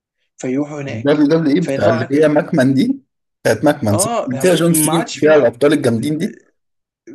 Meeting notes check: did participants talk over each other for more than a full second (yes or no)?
yes